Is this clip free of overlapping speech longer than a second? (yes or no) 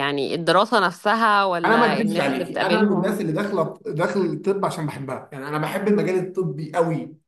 no